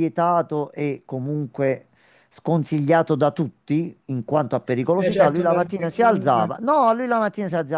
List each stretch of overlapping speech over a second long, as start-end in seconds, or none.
5.0-6.5